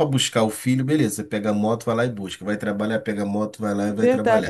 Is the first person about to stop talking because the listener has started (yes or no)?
yes